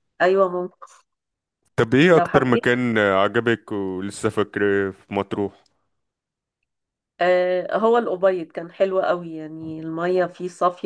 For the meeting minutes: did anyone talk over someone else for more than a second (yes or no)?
no